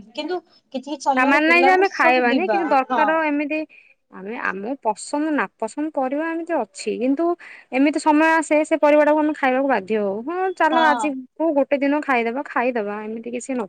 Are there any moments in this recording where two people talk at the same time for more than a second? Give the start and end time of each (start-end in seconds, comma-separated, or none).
1.2-3.0